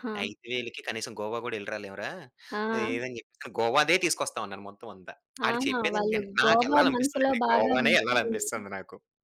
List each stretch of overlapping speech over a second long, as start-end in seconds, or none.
5.5-8.6